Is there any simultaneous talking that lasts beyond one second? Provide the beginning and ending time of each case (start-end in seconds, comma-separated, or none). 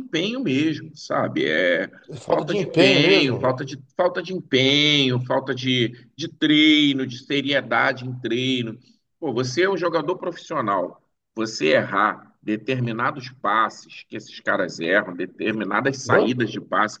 2.3-3.5